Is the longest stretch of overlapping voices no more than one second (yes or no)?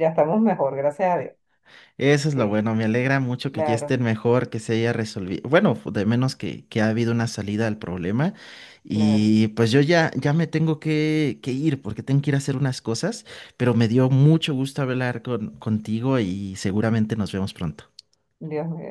yes